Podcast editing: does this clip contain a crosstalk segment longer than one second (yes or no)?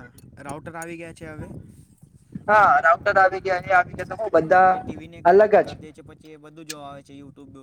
no